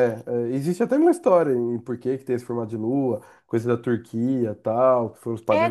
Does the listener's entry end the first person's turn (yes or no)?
yes